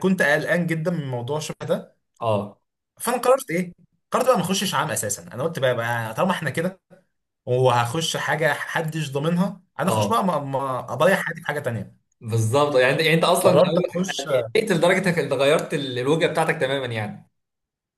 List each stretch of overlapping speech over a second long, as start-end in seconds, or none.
none